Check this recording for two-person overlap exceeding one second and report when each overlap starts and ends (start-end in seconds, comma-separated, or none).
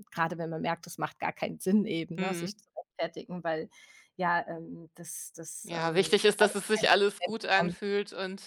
5.6-7.8